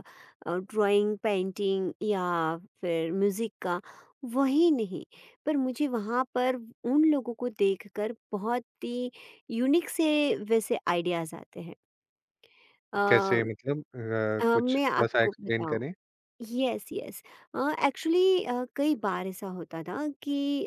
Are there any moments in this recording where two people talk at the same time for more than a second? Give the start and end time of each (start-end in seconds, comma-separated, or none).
14.4-15.8